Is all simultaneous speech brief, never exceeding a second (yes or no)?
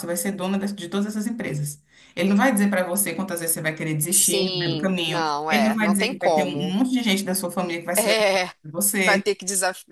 no